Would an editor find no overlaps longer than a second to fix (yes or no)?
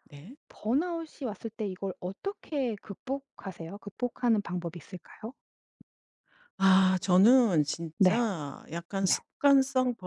yes